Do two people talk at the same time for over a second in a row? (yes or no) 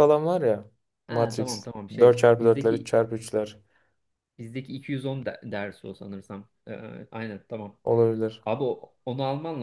yes